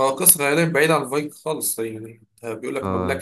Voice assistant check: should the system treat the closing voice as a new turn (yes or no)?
yes